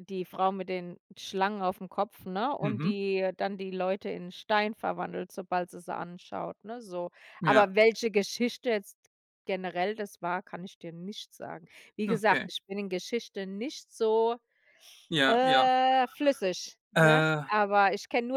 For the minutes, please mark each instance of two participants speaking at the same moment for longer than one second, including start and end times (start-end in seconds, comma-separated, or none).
none